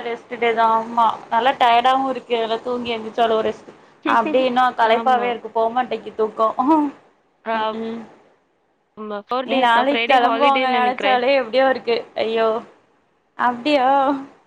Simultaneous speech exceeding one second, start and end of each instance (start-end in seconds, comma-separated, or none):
9.5-11.2